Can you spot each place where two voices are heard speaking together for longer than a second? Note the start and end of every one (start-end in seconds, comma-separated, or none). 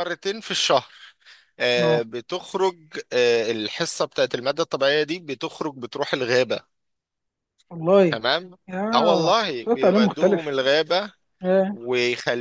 8.9-10.6